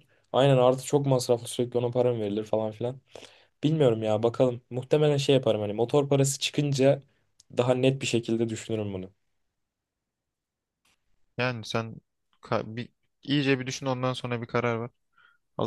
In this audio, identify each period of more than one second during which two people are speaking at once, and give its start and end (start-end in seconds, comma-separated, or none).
none